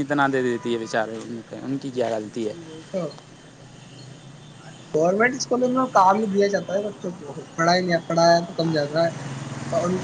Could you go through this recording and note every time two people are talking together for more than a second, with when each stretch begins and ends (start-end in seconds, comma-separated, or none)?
none